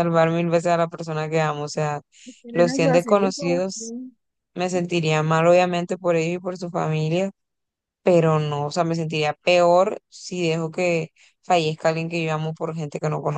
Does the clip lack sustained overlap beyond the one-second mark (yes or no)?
no